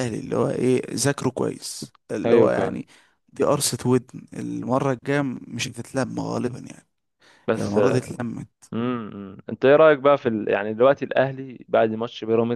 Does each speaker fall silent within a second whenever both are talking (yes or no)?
yes